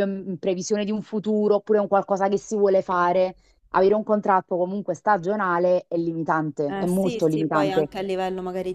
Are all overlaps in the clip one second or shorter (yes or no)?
no